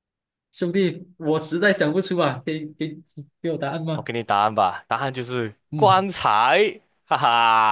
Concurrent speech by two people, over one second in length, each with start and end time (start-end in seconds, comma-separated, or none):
none